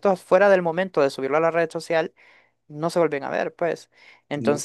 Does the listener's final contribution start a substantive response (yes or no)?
no